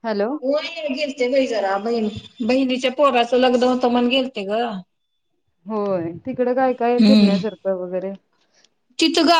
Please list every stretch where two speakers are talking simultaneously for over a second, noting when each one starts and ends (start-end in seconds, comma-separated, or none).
none